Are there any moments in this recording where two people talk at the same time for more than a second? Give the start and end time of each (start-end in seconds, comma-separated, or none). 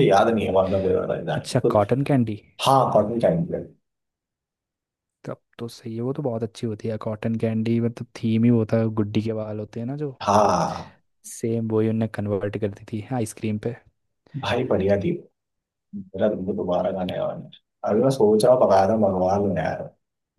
none